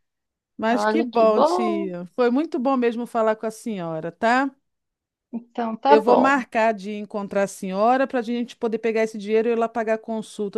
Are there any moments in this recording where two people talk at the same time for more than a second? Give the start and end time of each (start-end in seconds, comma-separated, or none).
0.7-1.9